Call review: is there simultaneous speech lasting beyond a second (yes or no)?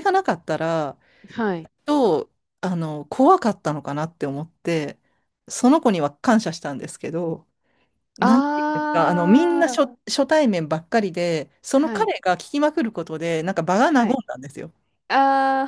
yes